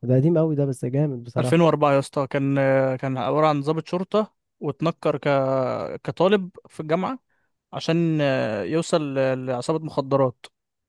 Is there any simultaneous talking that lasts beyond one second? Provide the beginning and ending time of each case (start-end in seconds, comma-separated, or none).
none